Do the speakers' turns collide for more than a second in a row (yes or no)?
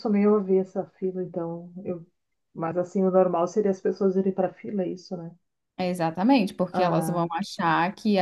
no